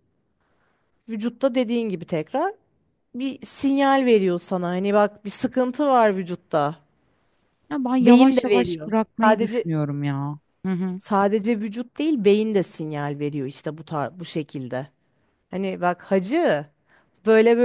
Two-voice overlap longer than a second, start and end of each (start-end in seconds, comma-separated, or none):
8.0-9.7